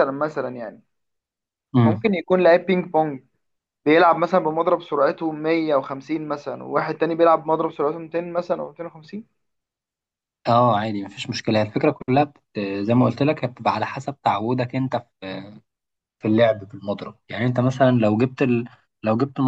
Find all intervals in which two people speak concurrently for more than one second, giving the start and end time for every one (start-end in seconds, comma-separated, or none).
none